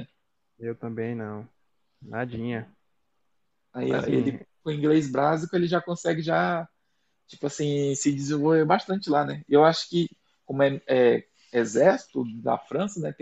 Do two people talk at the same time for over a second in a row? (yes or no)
no